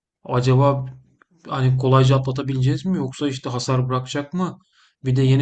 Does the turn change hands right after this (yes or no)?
no